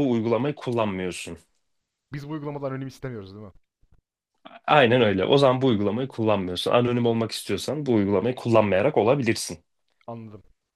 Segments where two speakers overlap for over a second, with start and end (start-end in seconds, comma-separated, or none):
none